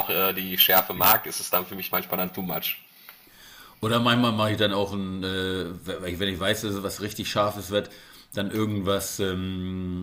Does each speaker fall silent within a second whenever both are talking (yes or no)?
yes